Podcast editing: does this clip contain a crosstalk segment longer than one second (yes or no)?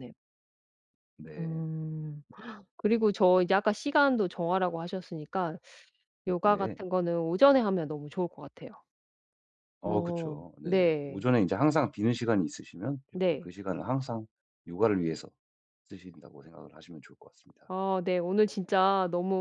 yes